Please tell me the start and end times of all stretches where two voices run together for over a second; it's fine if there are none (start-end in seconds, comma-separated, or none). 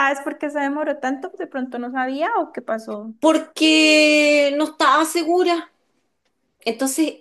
none